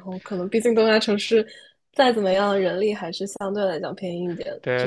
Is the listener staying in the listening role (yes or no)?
no